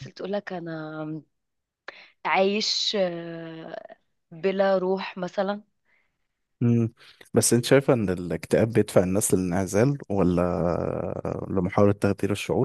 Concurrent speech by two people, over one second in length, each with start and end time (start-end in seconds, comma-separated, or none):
none